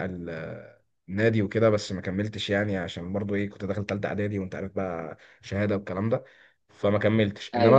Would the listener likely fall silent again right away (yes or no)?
yes